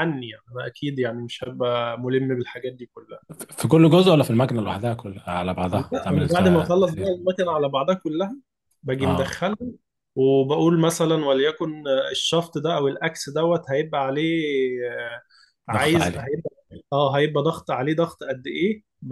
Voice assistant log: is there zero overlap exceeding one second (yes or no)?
no